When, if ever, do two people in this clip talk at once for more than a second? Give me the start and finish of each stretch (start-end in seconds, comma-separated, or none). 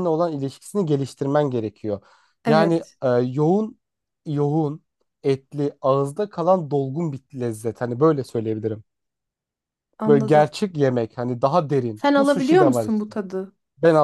11.9-13.2